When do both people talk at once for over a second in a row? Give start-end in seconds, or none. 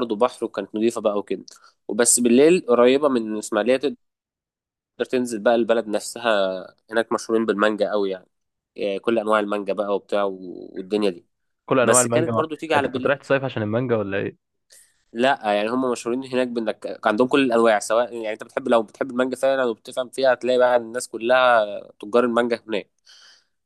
11.8-13.1